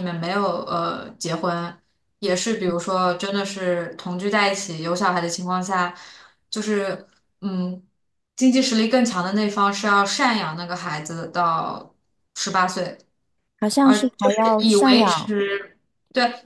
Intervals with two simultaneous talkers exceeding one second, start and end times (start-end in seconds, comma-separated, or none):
13.8-15.3